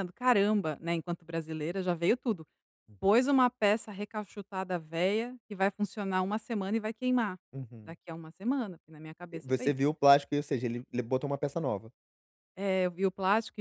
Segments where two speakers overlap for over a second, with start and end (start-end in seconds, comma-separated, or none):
none